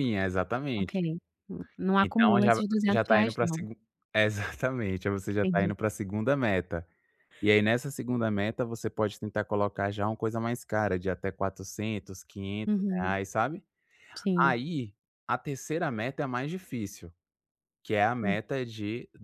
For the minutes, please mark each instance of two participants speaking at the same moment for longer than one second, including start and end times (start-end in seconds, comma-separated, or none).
2.0-3.6